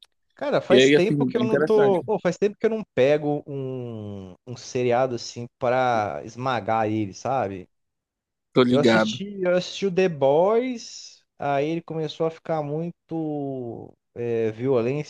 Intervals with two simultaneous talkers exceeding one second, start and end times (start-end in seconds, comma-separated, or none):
0.7-2.0